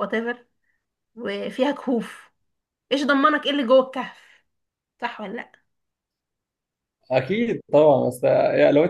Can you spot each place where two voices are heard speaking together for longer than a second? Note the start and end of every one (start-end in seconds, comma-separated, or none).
none